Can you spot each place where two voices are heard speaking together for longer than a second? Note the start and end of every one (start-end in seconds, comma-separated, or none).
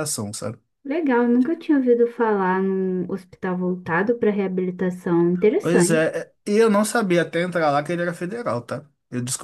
none